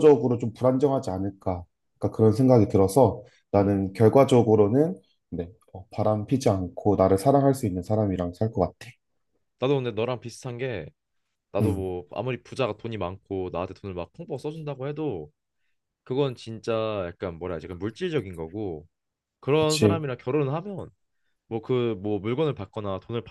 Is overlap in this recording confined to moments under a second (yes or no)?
yes